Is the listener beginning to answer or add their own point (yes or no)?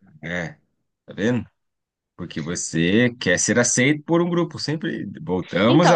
yes